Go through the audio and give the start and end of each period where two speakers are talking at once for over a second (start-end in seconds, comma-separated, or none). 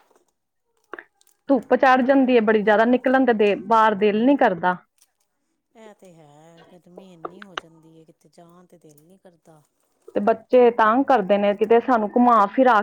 none